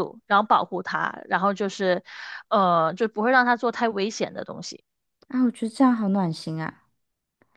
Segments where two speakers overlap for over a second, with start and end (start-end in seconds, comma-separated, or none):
none